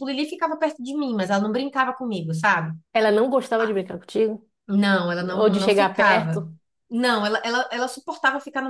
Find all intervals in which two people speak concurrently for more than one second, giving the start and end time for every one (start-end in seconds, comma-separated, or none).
5.2-6.4